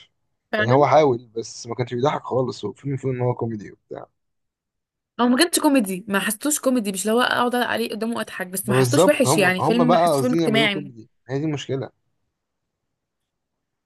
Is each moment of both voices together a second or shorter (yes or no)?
no